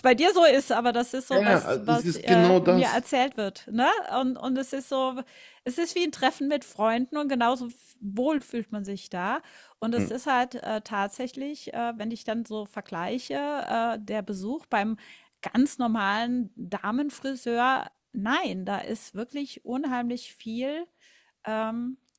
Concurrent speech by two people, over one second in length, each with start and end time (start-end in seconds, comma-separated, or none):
1.3-3.0